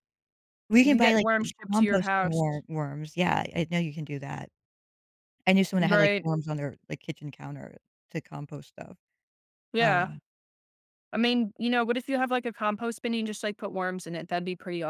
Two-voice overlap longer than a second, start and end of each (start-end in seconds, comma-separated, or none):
0.8-2.4